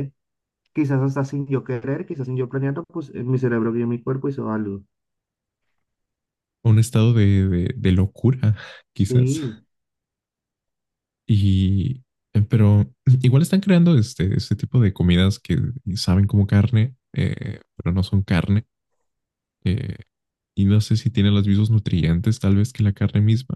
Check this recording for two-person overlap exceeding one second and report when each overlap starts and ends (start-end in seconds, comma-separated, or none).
none